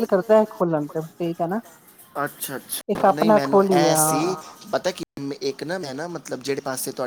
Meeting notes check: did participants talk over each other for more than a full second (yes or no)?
yes